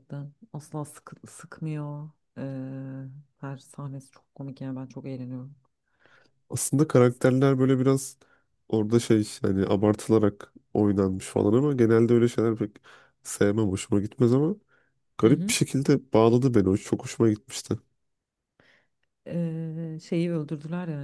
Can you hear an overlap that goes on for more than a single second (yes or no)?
no